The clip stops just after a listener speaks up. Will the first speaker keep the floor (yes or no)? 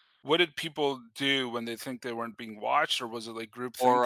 no